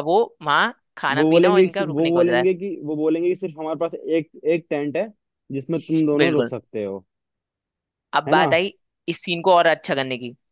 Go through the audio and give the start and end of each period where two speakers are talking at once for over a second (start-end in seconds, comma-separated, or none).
1.2-2.5